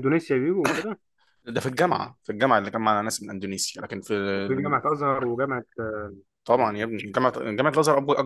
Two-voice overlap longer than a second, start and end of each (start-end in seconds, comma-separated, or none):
none